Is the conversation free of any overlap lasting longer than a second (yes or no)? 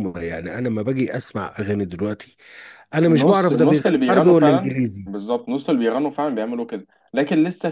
no